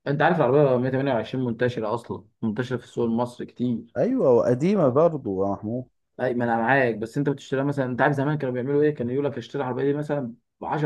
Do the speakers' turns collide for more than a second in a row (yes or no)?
no